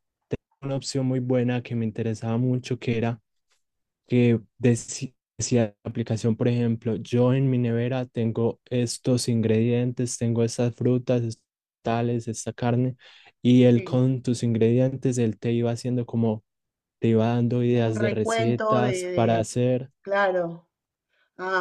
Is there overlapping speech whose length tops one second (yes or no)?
yes